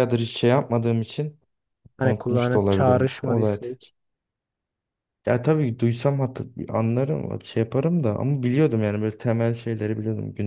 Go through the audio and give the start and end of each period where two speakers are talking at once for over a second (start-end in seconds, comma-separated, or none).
2.0-3.5